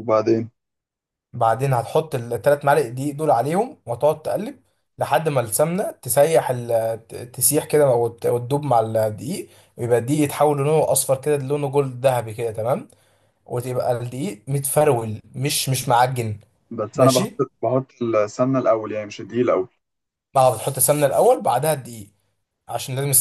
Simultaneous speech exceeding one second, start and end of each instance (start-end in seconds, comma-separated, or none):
none